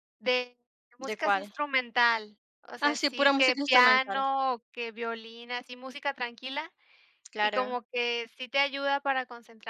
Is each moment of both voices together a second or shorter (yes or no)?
no